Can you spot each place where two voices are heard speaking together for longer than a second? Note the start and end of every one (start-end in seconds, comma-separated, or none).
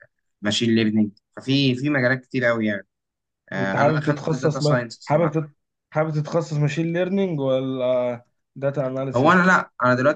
3.6-5.4